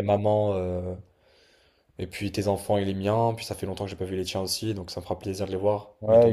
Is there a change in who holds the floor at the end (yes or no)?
yes